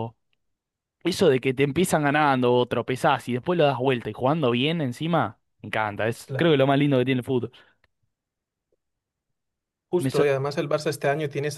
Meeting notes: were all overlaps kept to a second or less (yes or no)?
yes